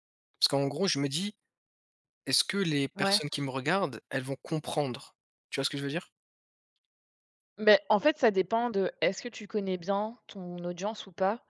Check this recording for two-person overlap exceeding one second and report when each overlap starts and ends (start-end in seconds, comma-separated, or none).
none